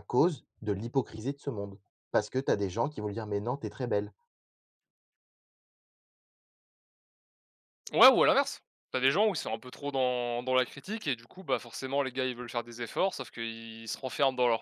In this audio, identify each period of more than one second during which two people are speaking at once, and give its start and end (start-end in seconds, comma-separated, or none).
none